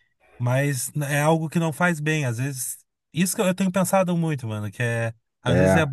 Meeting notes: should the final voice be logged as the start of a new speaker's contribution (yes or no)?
no